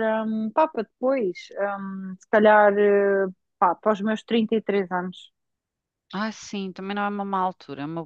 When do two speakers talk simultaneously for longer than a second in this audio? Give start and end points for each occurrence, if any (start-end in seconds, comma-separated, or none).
none